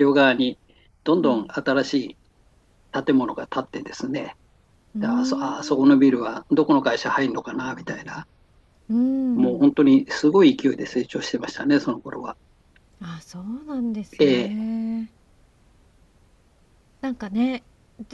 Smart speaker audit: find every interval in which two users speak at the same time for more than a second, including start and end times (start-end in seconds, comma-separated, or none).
5.0-6.3